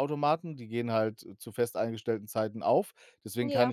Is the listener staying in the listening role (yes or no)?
yes